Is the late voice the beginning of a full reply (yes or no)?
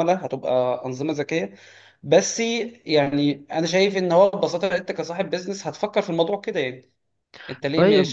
no